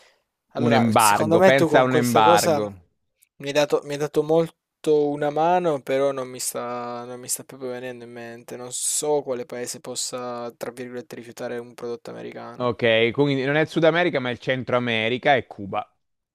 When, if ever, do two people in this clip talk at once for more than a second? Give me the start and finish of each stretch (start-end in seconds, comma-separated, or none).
0.6-2.6